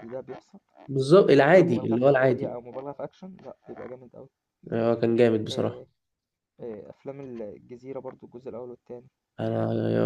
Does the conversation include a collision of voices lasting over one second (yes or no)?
yes